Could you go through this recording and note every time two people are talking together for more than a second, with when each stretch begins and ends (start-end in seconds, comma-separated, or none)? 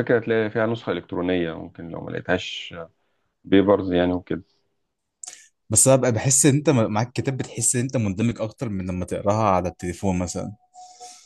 none